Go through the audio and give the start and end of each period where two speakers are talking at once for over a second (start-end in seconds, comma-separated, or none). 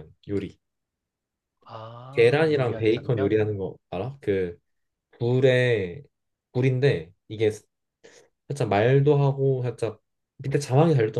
2.1-3.3